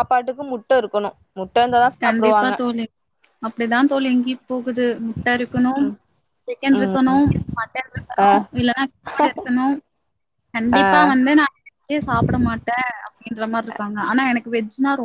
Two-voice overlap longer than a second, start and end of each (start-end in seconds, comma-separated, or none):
none